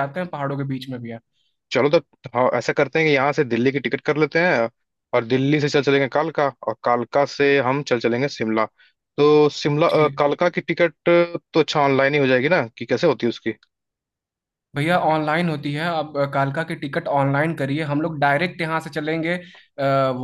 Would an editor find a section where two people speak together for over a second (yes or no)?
no